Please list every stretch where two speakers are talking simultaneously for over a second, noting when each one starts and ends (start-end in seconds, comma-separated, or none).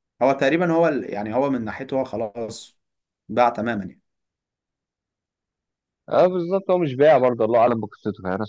none